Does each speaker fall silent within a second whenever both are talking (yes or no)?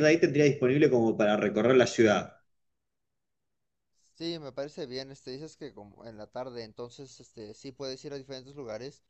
yes